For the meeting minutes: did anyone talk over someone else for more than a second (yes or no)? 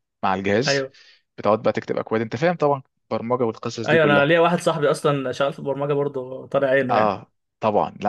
no